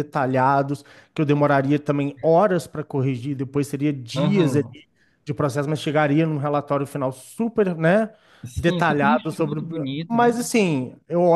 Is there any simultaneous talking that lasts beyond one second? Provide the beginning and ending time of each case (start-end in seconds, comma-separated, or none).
8.6-10.3